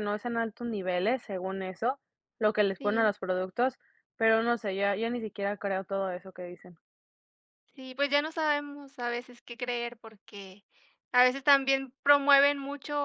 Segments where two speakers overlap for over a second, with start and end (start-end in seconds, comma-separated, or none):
none